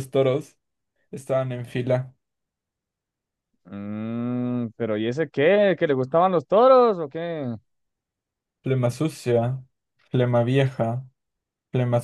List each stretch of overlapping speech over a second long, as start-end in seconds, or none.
none